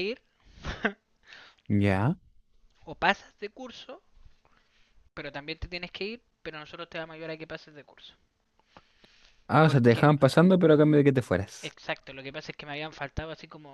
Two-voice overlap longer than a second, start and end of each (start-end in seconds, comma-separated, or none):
none